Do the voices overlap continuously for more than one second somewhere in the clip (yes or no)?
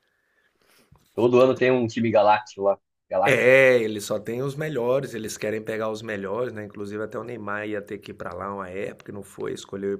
no